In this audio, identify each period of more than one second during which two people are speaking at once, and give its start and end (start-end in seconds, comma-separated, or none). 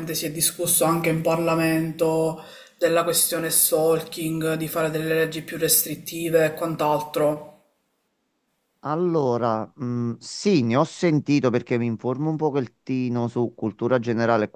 none